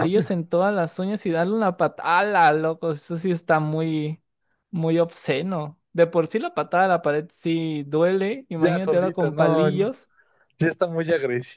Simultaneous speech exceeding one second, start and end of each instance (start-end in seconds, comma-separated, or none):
8.6-9.9